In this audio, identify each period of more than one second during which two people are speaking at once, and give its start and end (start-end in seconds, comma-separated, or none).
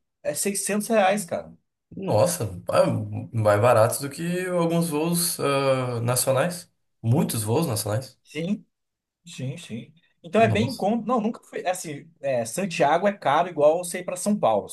none